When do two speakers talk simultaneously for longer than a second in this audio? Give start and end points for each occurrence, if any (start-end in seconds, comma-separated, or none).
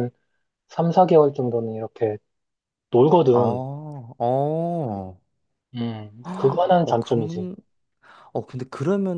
6.3-7.5